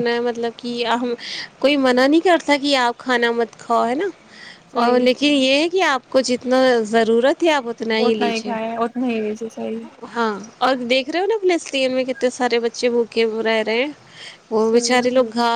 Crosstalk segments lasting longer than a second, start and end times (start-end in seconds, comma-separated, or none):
none